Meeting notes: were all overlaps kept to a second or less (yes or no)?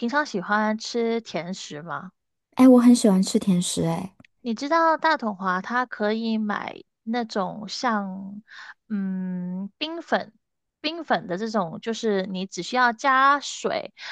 yes